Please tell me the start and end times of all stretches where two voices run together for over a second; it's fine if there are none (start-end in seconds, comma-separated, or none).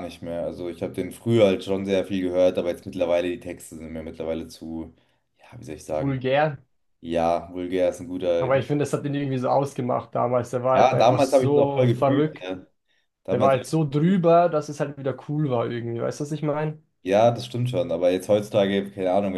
10.7-12.5